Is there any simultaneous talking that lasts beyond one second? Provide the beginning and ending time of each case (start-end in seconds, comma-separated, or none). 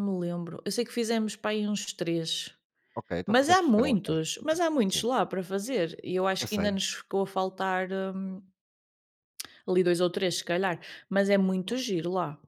3.2-5.0